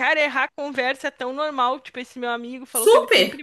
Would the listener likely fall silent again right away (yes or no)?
yes